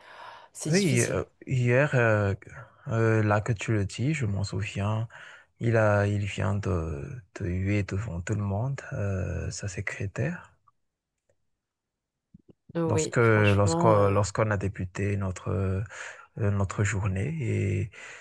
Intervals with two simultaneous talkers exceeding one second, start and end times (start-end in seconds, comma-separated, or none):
12.9-14.2